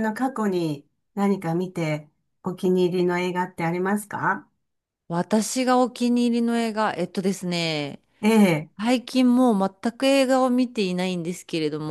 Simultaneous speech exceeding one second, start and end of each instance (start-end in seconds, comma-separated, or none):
none